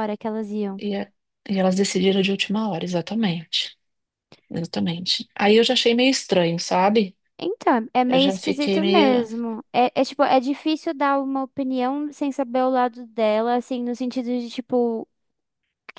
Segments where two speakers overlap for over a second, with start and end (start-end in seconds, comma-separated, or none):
8.1-9.3